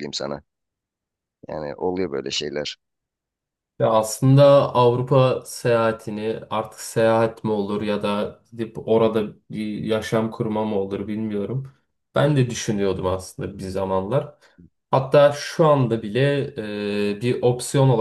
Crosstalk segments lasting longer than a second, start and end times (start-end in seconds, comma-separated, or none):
none